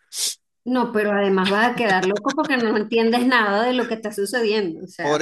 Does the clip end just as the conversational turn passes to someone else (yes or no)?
yes